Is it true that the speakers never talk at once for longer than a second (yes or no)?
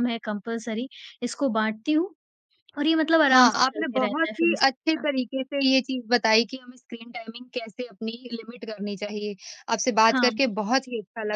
no